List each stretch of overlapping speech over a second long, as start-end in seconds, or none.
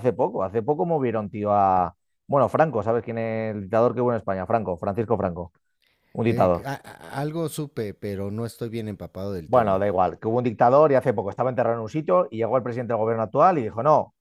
none